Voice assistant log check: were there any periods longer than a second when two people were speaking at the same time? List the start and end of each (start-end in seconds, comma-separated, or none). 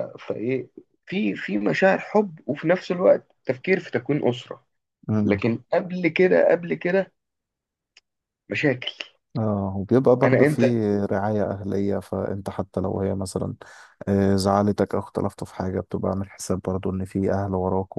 none